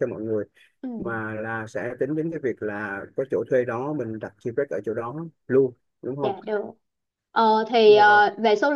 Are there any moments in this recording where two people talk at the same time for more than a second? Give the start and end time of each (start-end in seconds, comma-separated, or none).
none